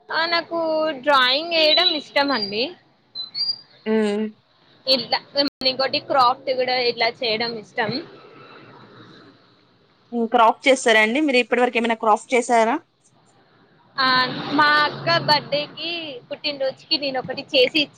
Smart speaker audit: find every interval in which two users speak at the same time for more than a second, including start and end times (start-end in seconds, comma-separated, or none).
none